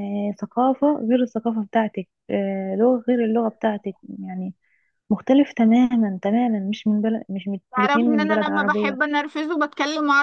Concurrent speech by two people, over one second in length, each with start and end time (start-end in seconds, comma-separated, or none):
7.7-9.0